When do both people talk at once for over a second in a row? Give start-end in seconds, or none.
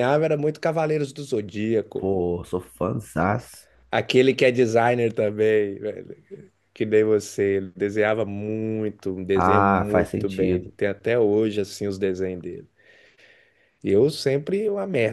9.3-10.7